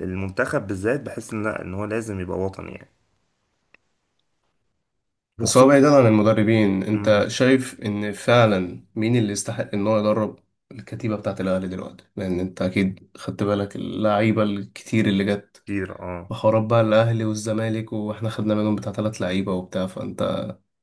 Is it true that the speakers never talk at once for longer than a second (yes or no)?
yes